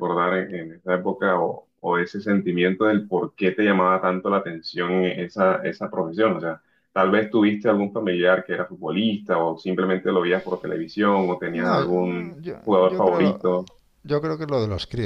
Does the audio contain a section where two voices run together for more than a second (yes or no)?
yes